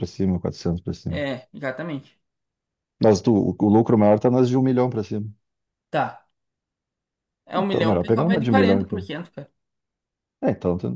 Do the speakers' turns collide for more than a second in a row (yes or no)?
yes